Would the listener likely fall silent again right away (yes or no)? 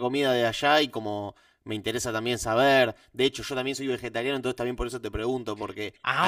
yes